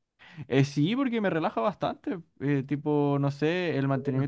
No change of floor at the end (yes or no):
yes